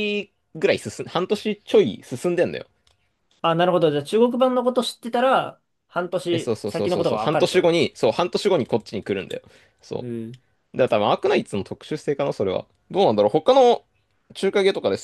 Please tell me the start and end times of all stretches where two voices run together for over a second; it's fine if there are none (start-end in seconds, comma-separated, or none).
6.3-7.8